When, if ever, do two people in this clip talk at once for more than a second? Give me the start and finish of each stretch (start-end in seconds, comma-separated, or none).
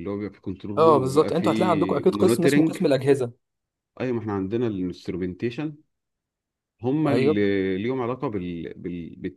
0.8-2.8